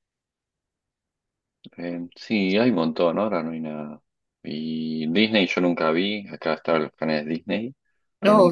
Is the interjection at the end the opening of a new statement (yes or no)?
yes